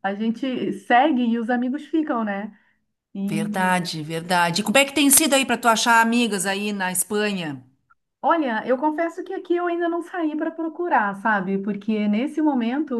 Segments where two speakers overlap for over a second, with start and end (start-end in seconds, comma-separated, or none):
none